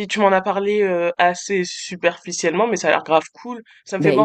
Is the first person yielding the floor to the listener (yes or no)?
yes